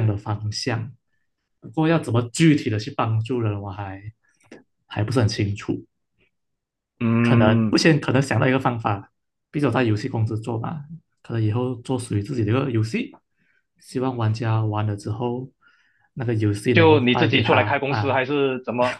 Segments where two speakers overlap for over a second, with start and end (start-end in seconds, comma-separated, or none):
16.7-18.2